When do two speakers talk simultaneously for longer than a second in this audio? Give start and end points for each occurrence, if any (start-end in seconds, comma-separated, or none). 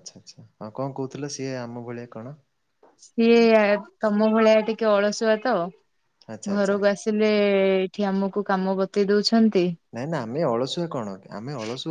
none